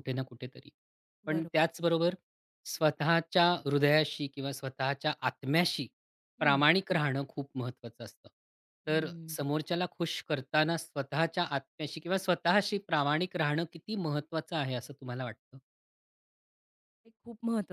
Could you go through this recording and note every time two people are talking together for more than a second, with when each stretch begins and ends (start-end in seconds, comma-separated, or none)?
none